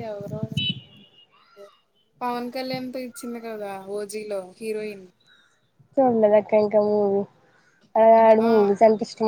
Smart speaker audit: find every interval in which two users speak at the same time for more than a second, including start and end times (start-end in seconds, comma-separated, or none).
none